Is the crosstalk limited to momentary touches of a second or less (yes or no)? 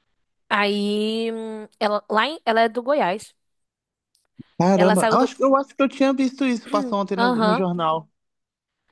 yes